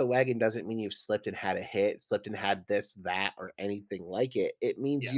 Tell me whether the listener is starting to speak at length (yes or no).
no